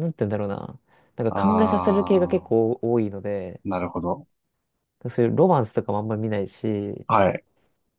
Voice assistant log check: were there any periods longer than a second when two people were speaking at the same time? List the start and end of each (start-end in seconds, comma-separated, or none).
1.3-2.5